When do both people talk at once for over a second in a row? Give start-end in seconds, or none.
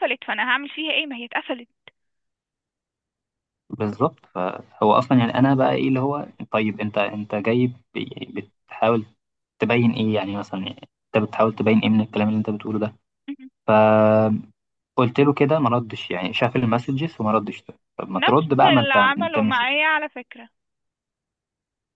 18.1-19.6